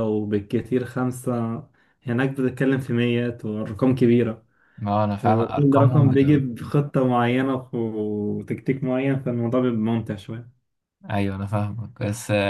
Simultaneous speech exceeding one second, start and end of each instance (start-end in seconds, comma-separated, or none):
5.2-6.4